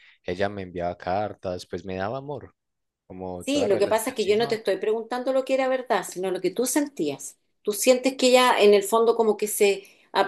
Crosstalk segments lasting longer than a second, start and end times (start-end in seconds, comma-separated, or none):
3.4-4.6